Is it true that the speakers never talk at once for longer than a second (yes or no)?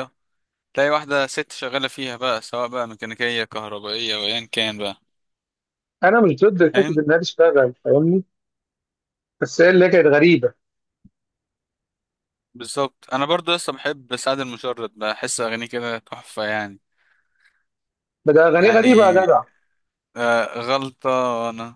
yes